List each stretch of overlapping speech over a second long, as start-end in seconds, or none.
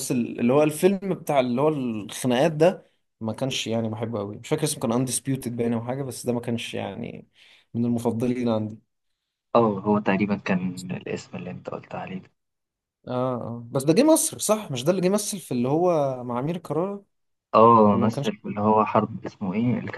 none